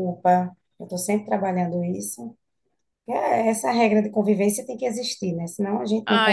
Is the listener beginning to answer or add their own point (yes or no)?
yes